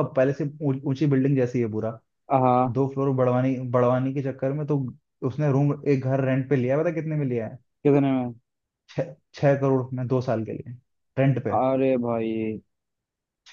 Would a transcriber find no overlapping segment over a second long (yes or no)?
yes